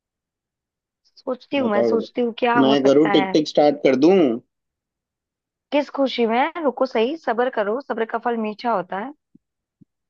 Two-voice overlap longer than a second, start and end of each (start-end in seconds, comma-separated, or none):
1.6-3.4